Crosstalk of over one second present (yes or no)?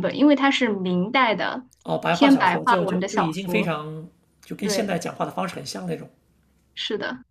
yes